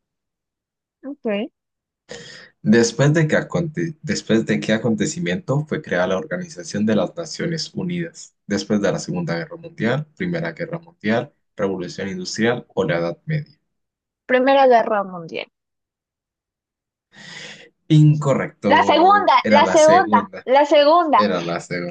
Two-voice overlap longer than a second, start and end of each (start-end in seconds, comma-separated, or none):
18.7-20.5